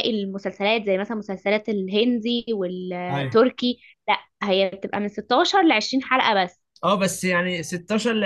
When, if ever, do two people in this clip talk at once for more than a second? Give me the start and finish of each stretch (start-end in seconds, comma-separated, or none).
none